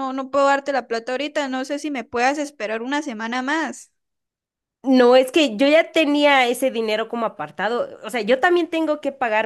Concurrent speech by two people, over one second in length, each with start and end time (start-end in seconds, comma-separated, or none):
none